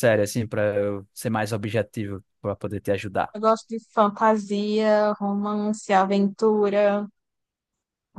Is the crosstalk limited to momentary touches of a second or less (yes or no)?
yes